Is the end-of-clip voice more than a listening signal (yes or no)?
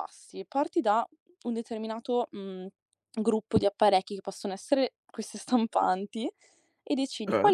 no